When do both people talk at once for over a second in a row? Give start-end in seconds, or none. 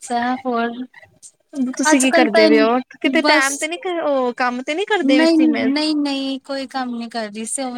none